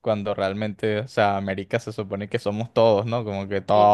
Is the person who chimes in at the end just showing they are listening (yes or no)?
yes